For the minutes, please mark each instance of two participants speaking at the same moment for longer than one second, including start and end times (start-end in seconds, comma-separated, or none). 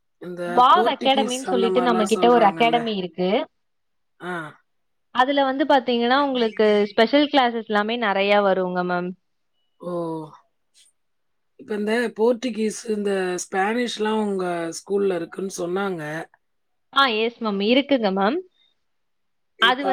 0.6-2.8